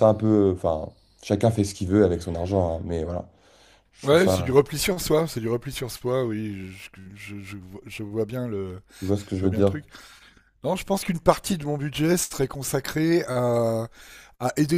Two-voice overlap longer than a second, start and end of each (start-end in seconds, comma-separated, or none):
none